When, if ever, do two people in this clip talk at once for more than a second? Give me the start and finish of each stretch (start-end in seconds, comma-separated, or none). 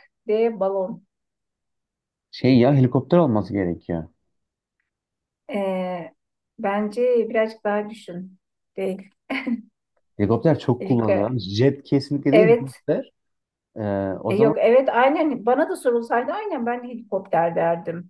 none